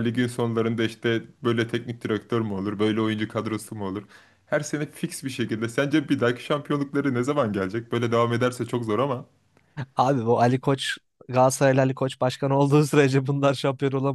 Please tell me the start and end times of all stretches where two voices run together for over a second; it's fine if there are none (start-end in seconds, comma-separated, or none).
none